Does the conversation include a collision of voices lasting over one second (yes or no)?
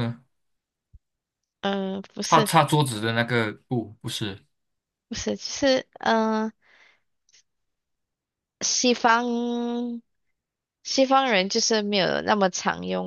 no